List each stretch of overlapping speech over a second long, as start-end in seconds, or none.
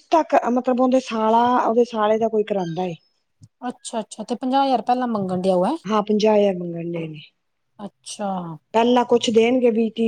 none